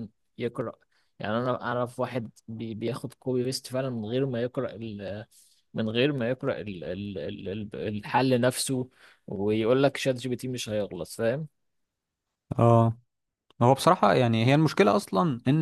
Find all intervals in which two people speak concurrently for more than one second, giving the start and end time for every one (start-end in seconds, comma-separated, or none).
none